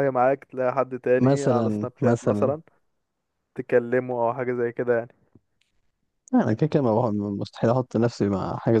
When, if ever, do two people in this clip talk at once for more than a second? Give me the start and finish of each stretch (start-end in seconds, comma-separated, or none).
1.2-2.5